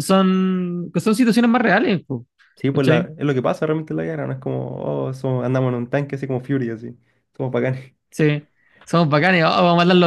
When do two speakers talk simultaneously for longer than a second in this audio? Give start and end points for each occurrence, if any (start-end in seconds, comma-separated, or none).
none